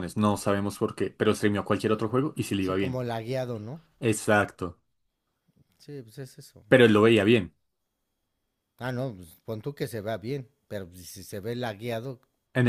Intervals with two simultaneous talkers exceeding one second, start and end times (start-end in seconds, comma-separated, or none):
none